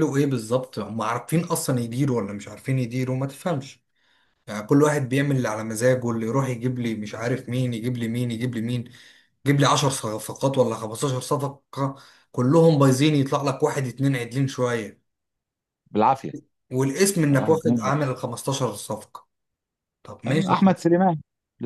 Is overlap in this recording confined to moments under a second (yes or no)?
yes